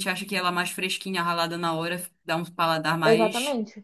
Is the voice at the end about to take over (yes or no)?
yes